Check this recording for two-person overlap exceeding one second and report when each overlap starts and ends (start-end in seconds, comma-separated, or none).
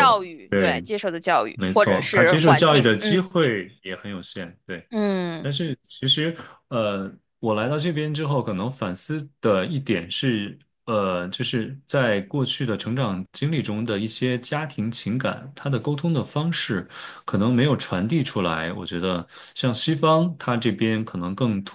1.5-3.3